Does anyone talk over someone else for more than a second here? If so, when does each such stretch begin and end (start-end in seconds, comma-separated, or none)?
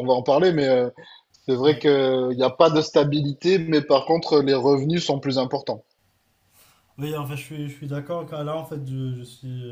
none